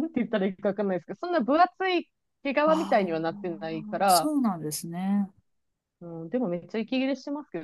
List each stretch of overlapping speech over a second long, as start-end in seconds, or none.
2.6-4.3